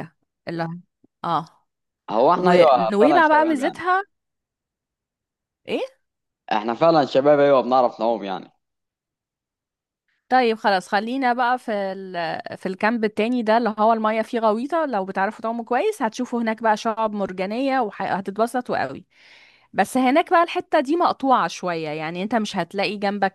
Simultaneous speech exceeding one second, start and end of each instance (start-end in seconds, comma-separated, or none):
2.4-3.8